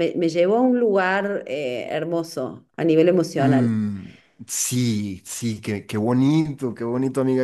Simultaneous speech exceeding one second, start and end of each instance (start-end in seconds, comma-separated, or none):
none